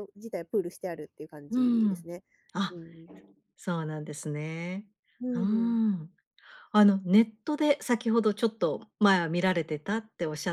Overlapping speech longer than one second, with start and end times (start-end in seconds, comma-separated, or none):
none